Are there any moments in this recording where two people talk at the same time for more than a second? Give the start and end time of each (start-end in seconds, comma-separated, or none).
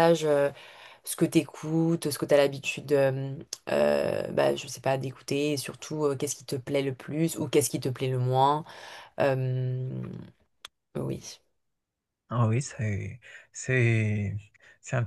none